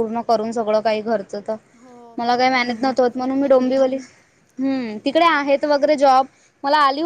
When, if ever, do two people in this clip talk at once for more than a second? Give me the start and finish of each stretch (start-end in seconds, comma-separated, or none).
2.2-3.8